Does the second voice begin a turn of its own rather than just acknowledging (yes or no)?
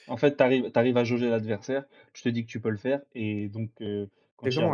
yes